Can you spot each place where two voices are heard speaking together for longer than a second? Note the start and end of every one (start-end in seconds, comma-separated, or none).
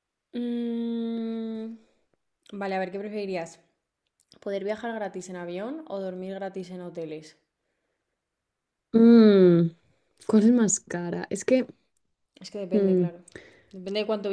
none